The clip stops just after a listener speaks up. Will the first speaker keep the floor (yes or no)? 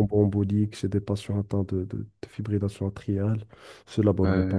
no